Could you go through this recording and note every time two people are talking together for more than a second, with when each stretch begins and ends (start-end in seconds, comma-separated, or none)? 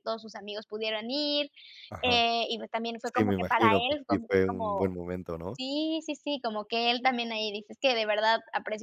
3.1-4.9